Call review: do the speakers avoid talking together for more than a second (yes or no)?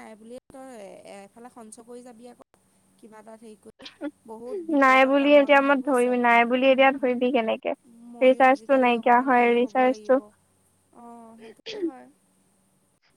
yes